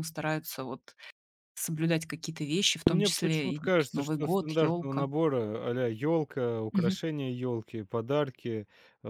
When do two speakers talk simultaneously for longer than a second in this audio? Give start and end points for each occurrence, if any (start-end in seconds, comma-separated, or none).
2.9-5.1